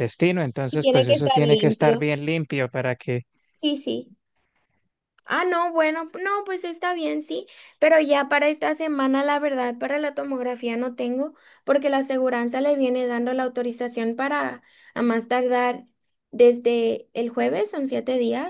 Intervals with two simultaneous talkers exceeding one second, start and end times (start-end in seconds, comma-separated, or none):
0.7-2.1